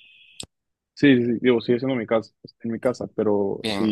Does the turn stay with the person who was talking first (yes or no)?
yes